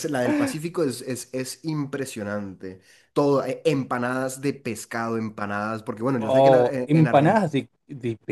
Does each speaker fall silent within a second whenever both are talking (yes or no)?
no